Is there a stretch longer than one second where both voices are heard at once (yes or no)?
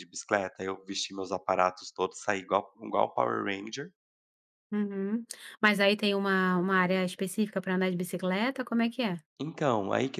no